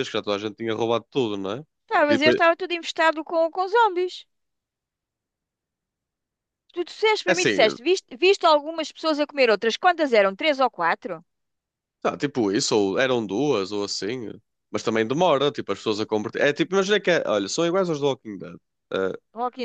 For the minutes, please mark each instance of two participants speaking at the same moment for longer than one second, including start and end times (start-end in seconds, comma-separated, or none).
none